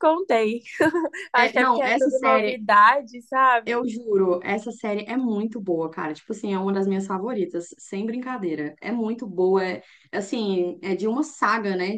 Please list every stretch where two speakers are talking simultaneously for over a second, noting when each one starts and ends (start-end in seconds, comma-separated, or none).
1.3-2.6